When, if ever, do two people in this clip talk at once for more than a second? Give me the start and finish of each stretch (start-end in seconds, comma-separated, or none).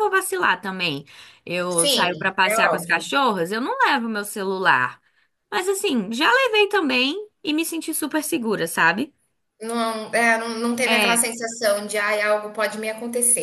1.7-3.0